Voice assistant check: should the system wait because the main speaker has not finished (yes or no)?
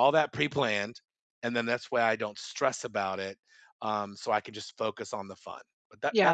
no